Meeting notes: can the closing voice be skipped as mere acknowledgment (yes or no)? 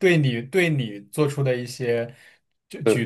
yes